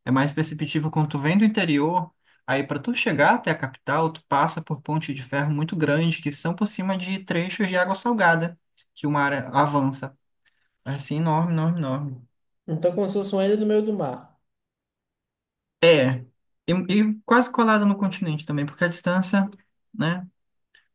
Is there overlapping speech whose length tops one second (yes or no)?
no